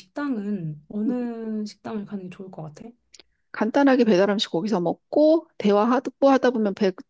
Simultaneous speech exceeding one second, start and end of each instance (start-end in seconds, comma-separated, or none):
none